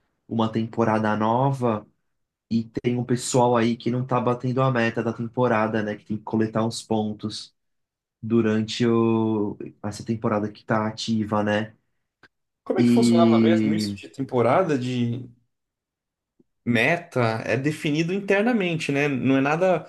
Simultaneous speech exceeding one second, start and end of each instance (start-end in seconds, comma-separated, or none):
12.8-14.0